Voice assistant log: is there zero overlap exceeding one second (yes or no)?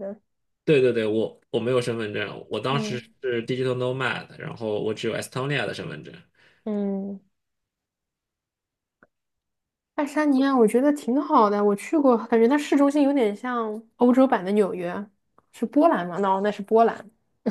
yes